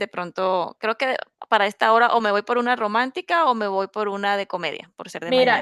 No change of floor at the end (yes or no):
no